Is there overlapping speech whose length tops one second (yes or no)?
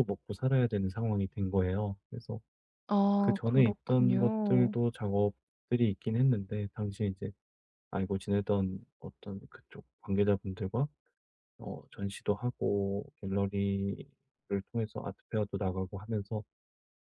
yes